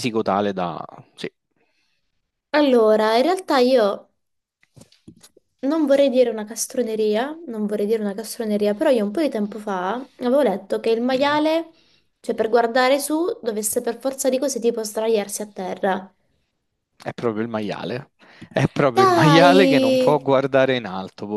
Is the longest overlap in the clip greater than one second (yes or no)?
yes